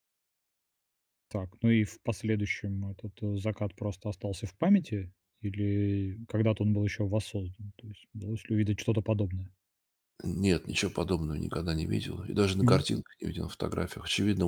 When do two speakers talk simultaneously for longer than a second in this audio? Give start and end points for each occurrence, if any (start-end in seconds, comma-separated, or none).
none